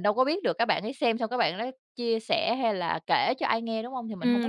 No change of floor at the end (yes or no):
no